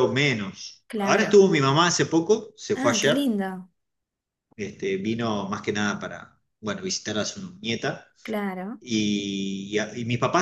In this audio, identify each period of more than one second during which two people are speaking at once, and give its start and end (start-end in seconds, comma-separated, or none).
none